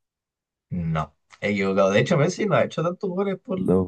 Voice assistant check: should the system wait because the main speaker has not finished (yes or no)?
yes